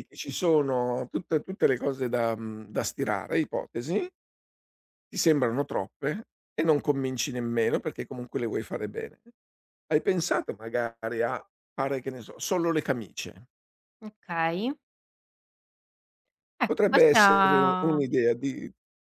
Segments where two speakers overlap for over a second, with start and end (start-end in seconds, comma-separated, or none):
16.6-18.0